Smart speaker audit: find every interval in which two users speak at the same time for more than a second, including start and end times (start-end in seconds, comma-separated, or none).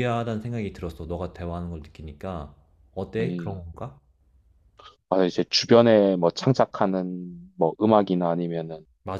none